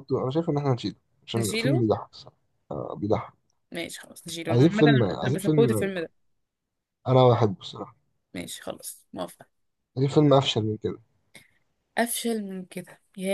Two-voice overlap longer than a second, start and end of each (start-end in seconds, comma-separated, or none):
4.5-5.9